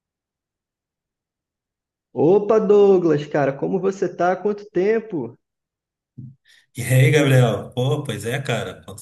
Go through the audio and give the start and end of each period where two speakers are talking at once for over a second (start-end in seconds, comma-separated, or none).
none